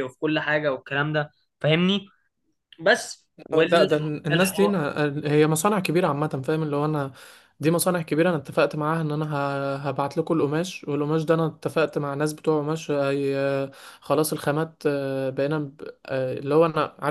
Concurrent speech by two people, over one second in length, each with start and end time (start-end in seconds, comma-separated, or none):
3.5-4.8